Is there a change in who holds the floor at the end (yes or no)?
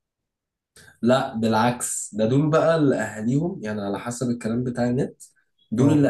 no